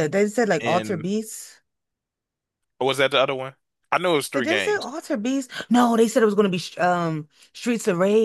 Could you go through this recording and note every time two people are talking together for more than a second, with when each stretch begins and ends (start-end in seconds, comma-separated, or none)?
none